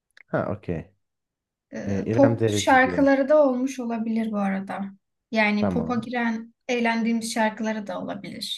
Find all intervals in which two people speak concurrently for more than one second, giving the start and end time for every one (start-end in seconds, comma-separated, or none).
1.9-3.1